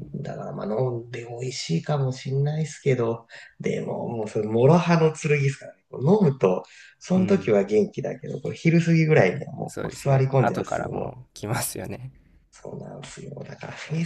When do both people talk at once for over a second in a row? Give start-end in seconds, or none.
9.7-11.3